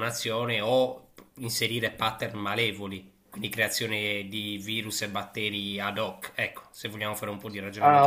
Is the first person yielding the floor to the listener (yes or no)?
yes